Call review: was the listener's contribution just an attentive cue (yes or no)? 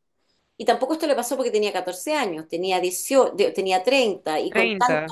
yes